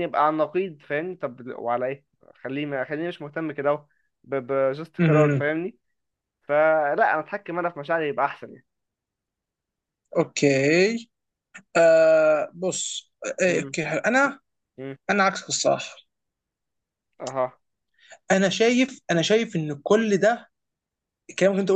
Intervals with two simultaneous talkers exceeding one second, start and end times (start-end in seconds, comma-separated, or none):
none